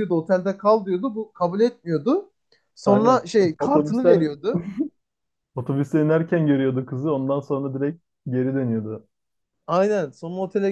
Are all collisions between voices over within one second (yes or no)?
no